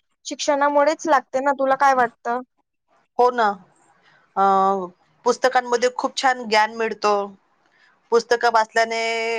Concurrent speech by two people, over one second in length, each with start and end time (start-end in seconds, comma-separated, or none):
none